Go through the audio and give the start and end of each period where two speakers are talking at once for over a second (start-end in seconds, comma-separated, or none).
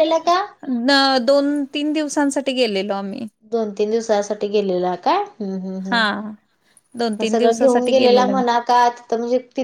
7.2-8.4